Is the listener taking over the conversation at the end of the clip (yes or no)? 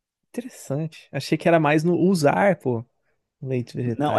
yes